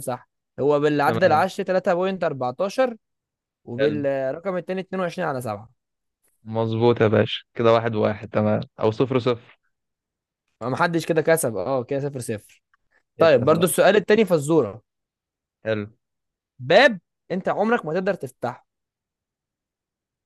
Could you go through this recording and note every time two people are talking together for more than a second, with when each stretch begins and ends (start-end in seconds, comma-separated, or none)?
none